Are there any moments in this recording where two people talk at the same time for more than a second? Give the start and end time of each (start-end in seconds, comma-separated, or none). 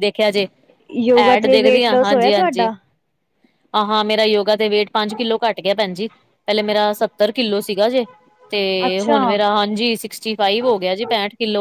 1.2-2.7